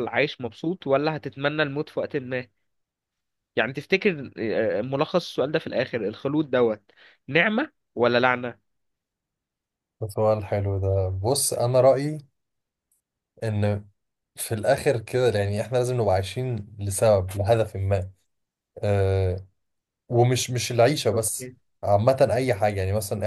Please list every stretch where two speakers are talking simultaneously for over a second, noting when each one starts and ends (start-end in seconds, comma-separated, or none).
none